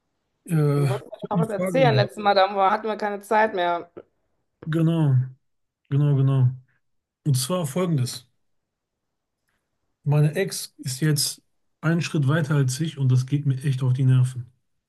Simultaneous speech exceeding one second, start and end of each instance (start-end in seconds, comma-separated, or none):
0.8-2.1